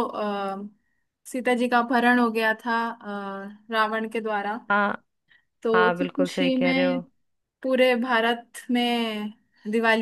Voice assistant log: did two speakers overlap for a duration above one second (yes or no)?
yes